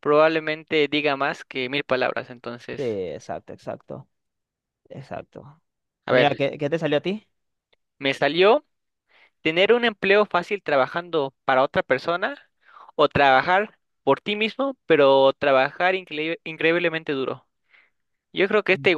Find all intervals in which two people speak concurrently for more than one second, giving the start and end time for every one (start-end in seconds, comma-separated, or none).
none